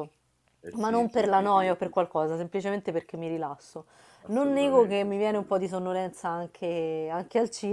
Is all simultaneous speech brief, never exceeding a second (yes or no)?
no